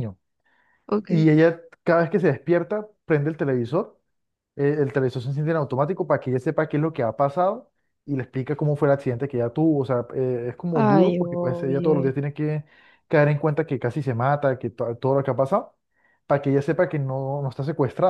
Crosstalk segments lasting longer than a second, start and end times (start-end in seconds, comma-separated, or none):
10.7-12.1